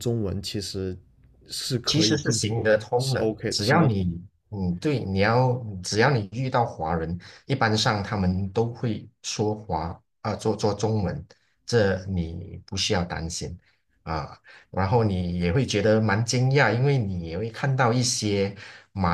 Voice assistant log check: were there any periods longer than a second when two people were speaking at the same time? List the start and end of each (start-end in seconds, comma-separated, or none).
1.8-4.0